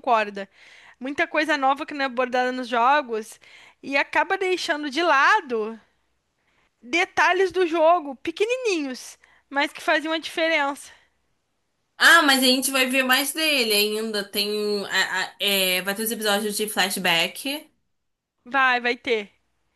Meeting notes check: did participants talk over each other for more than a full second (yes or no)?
no